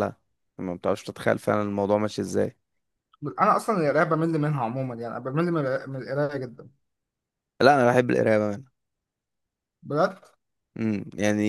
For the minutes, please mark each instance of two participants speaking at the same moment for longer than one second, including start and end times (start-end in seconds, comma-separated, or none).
none